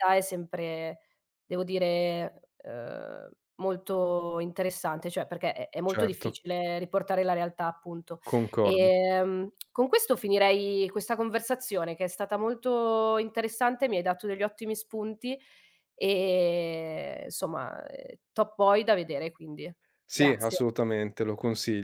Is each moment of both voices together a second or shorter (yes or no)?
yes